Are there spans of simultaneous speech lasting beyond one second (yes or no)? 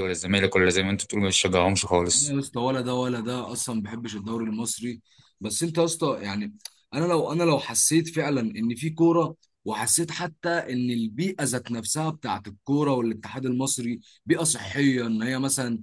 no